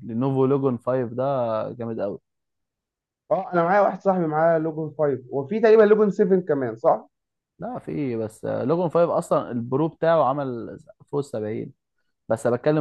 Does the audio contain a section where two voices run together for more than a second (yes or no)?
no